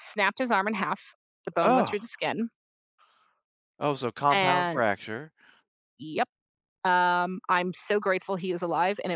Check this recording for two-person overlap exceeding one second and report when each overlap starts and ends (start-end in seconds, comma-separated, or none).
none